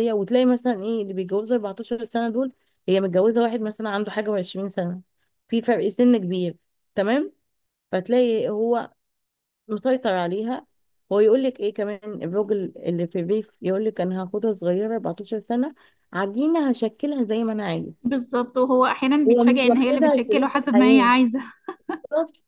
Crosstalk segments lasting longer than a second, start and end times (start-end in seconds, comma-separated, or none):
19.3-21.1